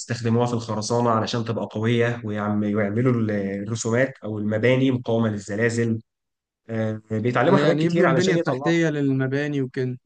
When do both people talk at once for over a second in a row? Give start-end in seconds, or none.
7.5-8.7